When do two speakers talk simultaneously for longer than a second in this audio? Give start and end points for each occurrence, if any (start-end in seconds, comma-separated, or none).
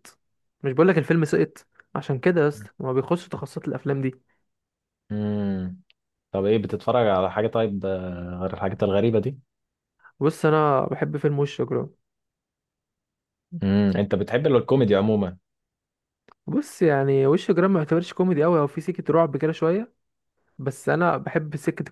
none